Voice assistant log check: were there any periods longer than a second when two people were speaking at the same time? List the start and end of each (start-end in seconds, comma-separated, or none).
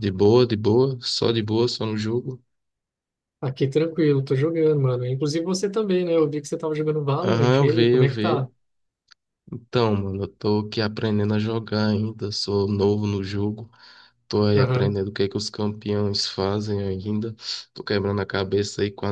7.2-8.5